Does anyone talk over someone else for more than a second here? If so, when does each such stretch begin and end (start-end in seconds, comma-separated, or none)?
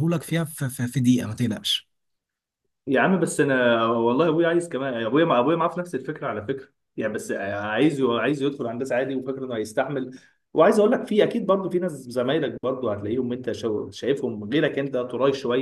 none